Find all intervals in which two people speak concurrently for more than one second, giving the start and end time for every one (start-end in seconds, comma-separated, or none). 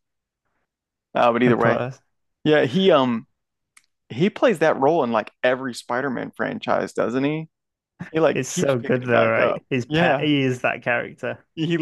8.3-10.3